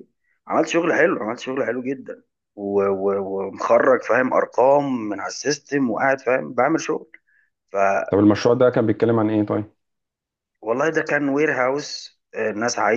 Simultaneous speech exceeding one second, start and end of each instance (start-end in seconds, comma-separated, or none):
none